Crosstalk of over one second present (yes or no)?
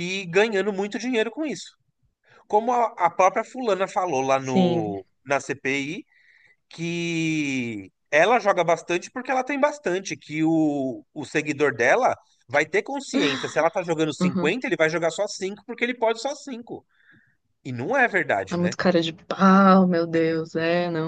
no